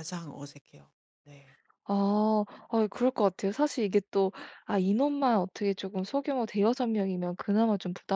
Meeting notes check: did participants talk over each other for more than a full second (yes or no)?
no